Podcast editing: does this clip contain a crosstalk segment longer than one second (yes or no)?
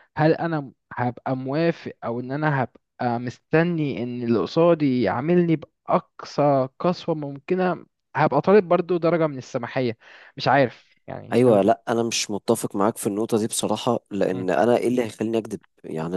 no